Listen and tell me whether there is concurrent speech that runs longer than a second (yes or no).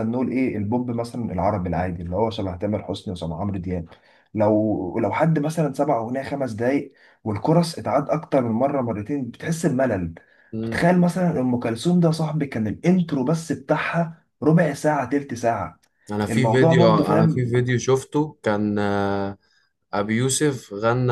yes